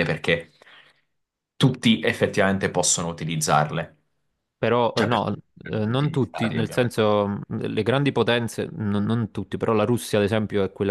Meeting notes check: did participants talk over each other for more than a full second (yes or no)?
yes